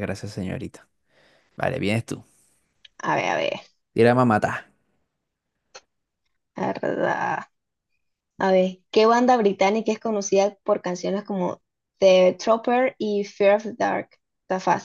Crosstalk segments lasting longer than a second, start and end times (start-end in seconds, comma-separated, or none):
none